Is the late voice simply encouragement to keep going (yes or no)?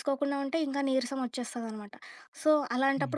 yes